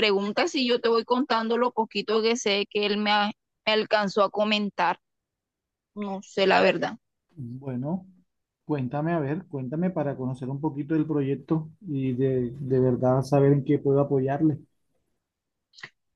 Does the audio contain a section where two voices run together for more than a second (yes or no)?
no